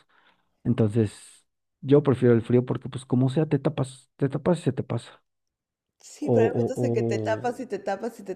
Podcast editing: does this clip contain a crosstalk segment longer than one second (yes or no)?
yes